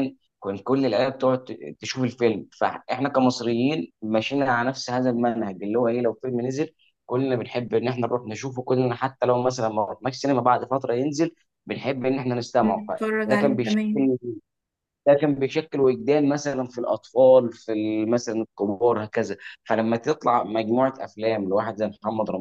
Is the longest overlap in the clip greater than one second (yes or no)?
yes